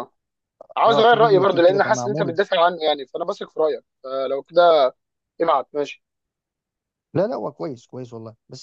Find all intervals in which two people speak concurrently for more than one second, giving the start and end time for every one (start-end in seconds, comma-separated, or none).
0.9-2.4